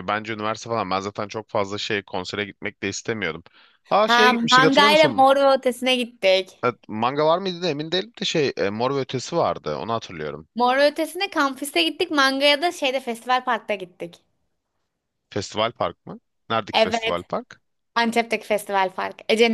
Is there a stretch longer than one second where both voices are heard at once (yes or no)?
yes